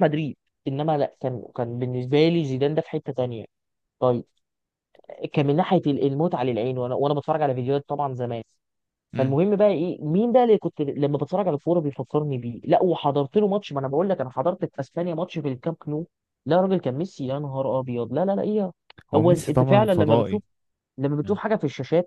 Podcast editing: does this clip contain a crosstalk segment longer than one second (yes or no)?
yes